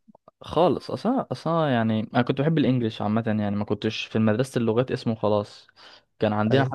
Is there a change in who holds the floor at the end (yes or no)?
no